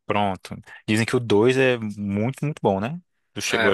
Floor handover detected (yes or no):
yes